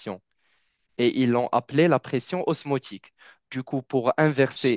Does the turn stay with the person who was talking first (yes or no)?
yes